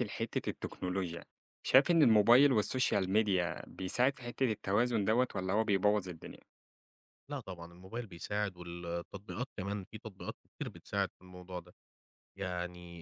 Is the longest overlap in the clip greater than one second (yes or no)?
no